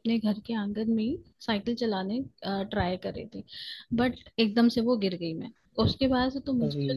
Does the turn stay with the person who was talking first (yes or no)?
yes